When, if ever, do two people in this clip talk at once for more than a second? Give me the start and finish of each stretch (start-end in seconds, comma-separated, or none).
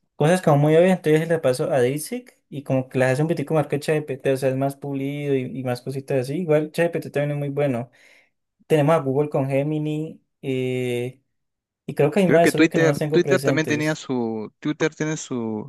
12.2-14.0